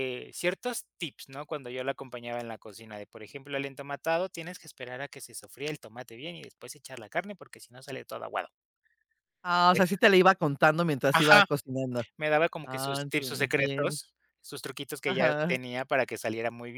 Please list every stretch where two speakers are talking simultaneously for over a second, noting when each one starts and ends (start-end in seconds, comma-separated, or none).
12.6-14.0